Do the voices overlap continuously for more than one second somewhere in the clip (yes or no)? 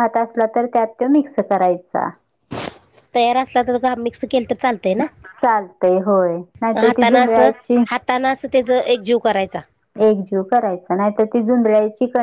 no